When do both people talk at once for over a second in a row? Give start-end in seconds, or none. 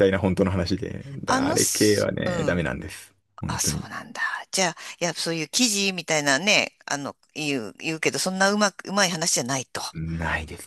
1.3-2.6